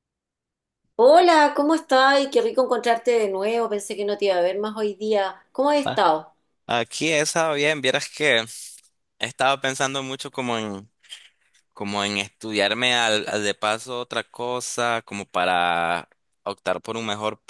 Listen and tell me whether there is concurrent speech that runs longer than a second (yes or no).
no